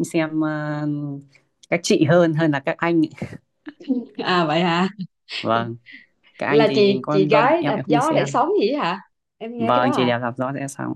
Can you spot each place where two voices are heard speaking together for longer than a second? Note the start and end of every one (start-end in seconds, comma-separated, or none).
6.5-8.4